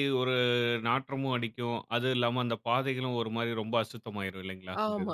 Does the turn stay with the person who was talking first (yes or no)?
no